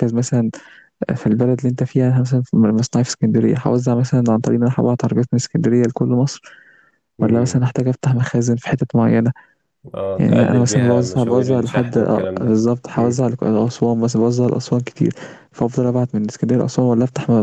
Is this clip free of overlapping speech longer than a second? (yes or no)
no